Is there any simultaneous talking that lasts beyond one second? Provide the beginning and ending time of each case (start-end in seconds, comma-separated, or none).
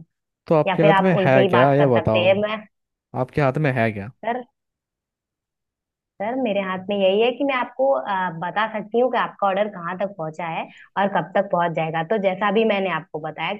0.7-2.3